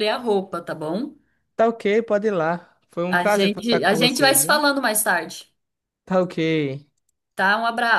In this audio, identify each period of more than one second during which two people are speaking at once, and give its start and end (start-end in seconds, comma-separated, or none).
3.1-4.6